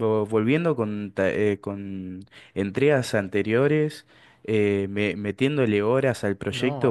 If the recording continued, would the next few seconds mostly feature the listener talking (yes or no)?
yes